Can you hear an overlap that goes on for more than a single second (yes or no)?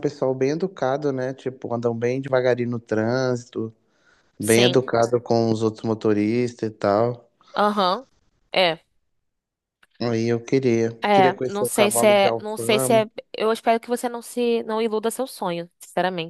yes